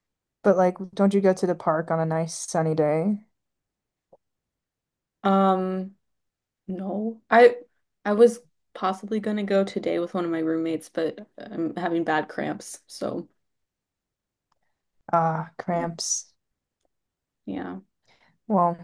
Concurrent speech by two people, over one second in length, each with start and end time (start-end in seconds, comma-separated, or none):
none